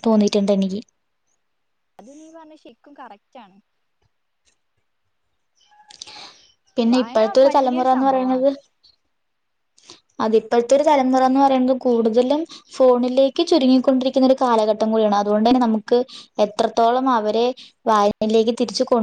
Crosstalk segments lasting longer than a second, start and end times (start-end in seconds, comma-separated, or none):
6.9-8.5